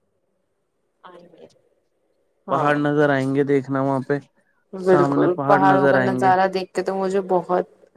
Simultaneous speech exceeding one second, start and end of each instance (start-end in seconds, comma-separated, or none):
4.9-6.3